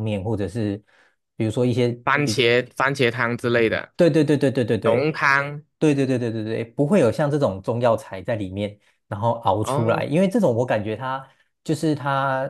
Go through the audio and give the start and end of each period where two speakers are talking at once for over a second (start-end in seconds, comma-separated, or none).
none